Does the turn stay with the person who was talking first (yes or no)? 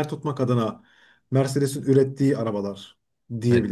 no